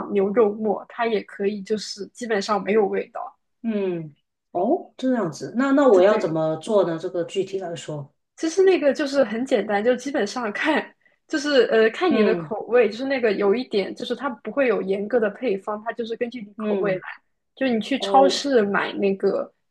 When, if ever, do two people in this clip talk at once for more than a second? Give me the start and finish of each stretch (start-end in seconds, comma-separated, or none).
none